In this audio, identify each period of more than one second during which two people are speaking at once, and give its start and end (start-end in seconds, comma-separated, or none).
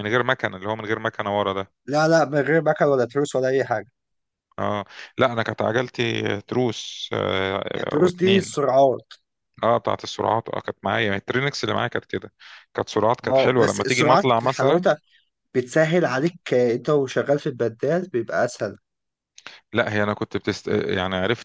13.3-14.8